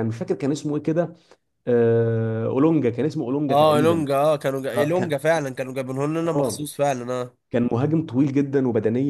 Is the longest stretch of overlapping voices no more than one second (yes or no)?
yes